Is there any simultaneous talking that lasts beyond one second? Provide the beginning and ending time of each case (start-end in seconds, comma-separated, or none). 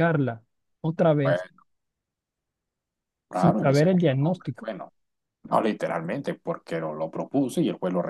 3.3-4.7